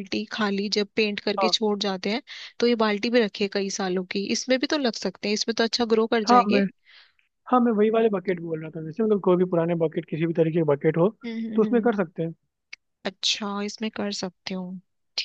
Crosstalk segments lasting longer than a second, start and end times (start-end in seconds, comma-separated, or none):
none